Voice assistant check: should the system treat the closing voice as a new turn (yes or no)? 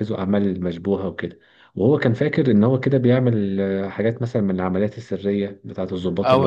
yes